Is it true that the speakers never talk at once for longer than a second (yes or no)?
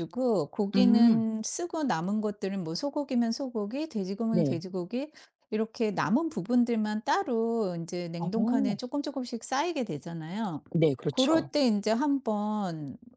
yes